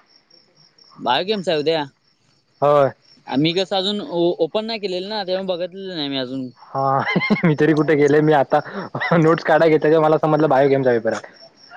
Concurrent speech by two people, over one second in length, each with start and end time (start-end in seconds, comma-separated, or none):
none